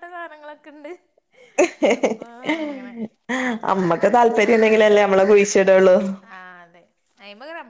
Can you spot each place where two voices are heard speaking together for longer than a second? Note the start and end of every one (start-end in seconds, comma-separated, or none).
3.7-5.0